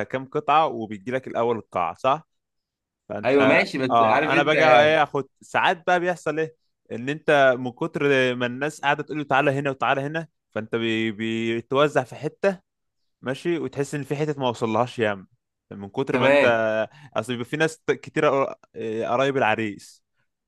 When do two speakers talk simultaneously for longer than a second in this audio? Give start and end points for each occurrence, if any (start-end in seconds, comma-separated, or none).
3.2-4.5